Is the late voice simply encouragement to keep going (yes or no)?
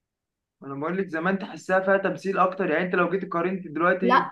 no